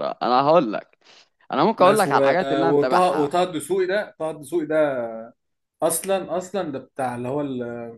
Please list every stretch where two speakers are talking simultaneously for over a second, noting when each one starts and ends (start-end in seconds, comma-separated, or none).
1.8-3.3